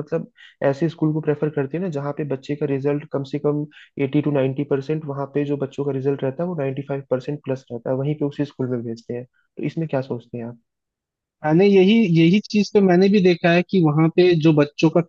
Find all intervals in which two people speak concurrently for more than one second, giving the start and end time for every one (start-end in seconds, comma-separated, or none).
none